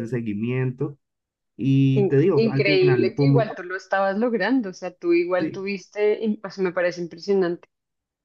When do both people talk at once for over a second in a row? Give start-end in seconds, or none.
2.0-3.5